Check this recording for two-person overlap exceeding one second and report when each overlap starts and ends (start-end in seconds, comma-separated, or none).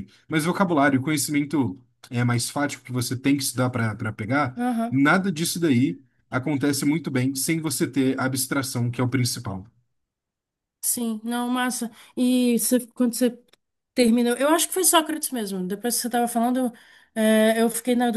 none